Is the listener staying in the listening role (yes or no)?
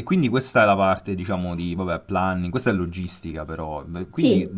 yes